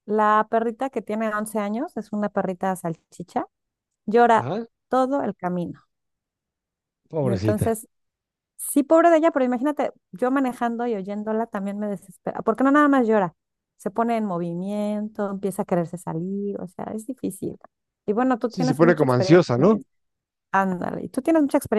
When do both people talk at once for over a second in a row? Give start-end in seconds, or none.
18.5-19.8